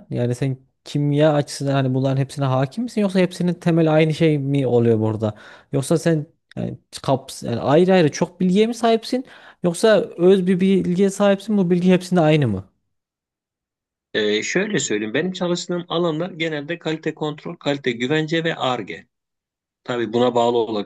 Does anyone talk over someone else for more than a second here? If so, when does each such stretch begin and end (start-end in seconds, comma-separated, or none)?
none